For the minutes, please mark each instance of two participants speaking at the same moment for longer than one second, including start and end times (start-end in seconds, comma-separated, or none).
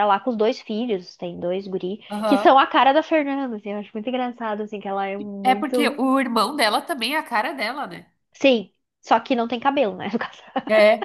none